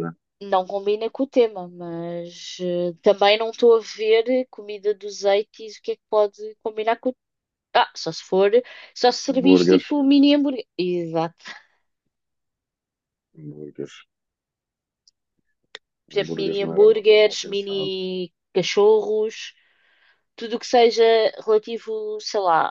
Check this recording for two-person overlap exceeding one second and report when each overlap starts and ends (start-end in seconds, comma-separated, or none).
16.1-17.9